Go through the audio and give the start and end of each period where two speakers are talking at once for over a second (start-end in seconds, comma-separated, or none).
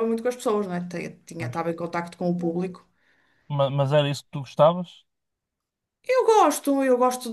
none